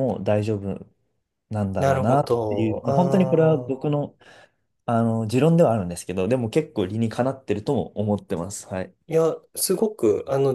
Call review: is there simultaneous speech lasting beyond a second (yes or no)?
yes